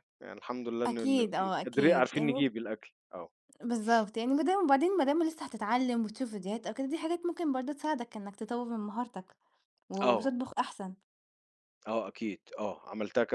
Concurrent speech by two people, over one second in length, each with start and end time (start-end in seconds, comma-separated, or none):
0.8-2.4